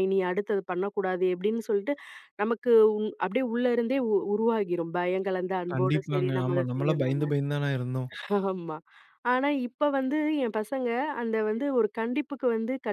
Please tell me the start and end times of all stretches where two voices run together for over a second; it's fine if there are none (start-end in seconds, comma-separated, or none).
5.7-7.3